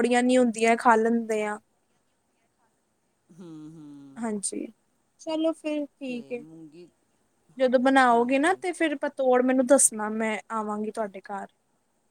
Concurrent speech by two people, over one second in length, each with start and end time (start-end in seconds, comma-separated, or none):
none